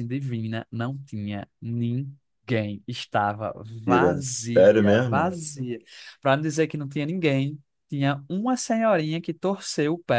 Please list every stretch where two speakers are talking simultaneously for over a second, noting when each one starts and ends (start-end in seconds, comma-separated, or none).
3.8-5.4